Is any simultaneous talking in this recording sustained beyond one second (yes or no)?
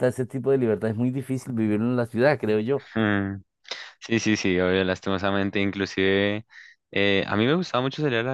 no